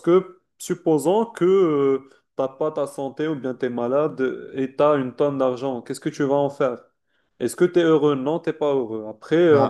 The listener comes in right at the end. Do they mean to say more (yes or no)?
yes